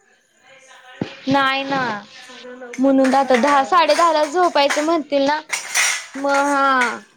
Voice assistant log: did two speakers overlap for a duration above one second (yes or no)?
yes